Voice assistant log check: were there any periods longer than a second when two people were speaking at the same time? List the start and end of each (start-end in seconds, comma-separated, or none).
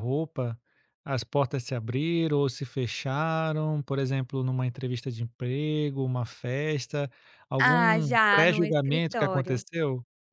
7.6-9.6